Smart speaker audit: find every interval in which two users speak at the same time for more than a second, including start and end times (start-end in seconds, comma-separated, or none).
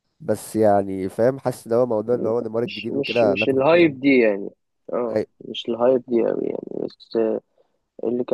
2.6-4.1